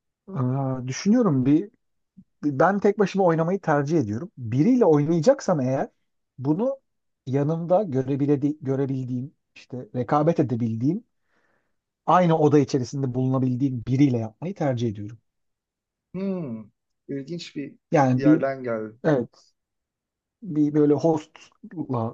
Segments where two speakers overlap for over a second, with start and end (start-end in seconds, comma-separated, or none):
none